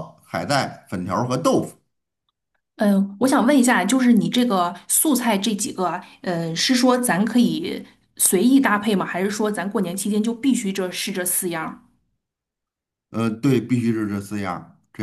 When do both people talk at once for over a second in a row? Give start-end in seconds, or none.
none